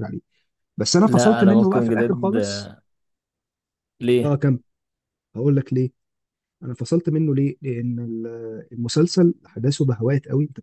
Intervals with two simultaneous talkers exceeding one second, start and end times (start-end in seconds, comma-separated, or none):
1.0-2.4